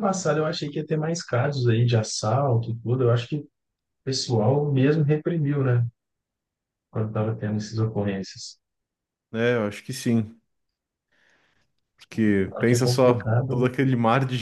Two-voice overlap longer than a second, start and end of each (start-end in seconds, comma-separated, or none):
12.5-13.7